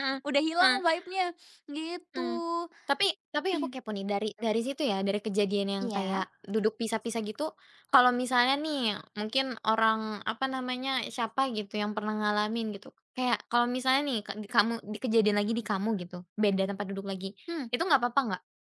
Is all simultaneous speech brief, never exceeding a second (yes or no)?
yes